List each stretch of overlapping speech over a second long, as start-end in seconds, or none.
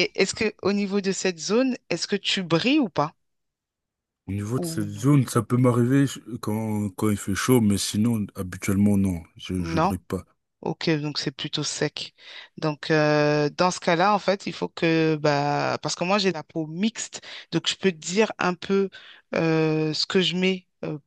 none